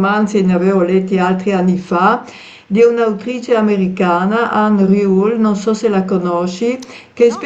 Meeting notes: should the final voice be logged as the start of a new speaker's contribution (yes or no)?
no